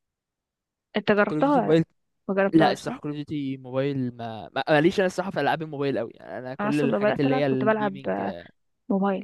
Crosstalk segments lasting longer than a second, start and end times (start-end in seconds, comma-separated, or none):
6.6-8.0